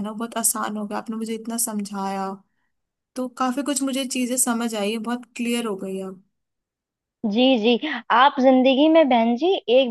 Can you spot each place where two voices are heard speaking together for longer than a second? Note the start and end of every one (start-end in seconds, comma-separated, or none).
none